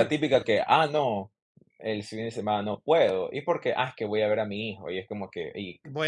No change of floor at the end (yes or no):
no